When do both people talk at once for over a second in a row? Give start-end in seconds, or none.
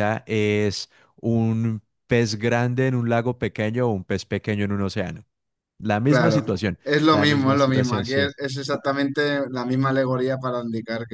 6.0-8.3